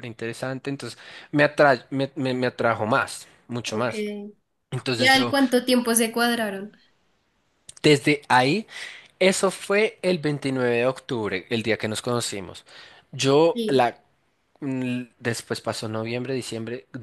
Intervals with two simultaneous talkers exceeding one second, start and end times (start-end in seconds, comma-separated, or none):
none